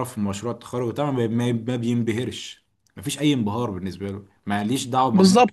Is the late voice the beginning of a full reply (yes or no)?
yes